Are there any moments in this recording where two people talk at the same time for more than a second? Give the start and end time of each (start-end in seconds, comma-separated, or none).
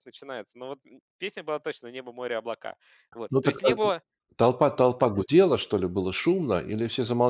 none